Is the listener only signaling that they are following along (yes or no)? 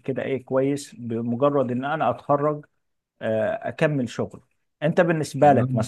yes